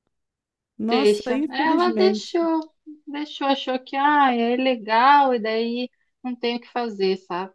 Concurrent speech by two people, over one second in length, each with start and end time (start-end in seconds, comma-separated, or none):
0.9-2.4